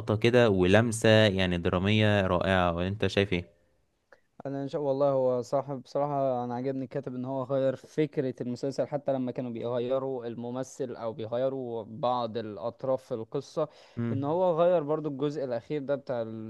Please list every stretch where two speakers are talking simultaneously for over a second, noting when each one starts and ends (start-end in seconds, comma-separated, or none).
none